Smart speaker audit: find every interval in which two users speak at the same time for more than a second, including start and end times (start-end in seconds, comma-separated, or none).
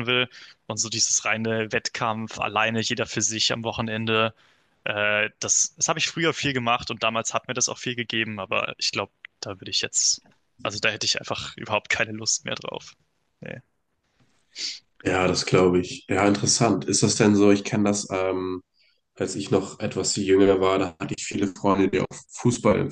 none